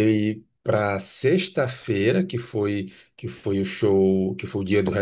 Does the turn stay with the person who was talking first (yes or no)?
yes